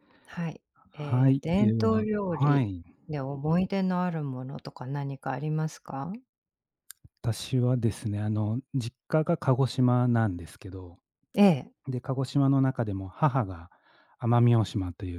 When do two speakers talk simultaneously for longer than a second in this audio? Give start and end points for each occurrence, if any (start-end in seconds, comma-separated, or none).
0.9-2.7